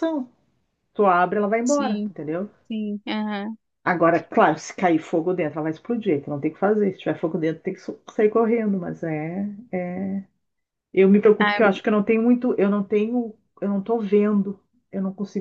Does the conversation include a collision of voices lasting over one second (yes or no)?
no